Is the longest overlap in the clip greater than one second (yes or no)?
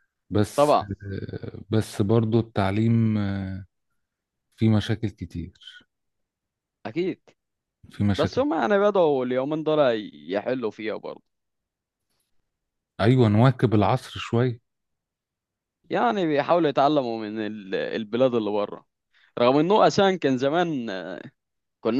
no